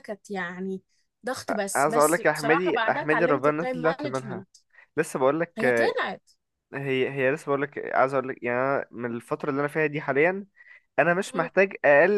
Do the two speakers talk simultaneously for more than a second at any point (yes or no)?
yes